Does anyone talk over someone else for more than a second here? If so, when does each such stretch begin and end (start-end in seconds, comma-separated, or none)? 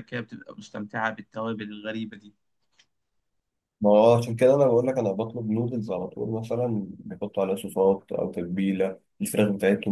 none